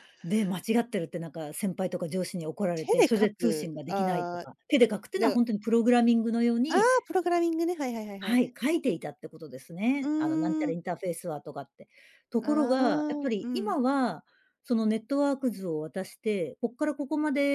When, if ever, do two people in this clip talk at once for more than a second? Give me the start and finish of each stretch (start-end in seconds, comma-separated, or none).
2.7-4.5